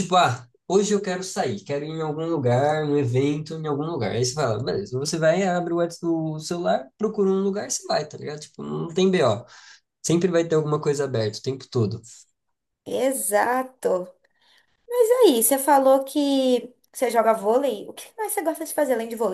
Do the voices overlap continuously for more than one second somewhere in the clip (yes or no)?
no